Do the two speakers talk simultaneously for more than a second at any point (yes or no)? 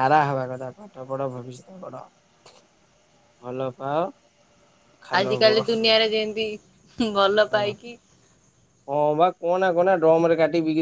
no